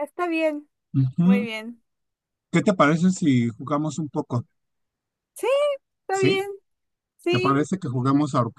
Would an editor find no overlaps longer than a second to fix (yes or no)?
yes